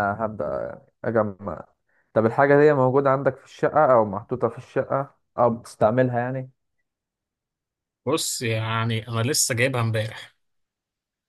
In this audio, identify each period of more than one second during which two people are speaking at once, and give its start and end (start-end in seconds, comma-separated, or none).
none